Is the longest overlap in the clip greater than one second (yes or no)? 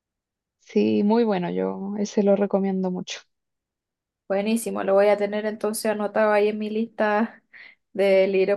no